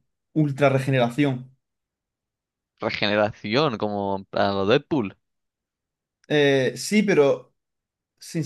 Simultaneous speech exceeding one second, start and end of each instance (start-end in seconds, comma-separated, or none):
none